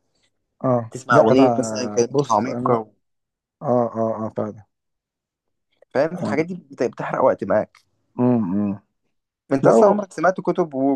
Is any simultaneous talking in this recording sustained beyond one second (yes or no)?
yes